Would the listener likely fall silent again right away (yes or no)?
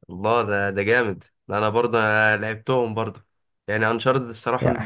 yes